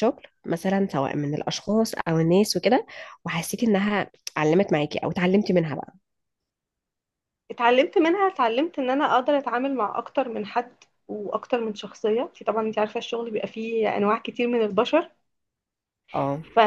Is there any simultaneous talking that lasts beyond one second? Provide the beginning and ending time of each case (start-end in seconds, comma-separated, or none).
none